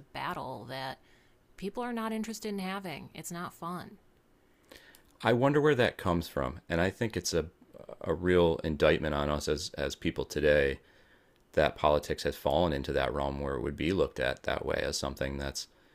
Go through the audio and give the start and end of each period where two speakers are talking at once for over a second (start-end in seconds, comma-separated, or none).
none